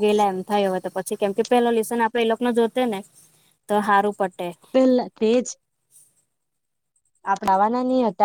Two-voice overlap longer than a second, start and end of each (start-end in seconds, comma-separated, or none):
none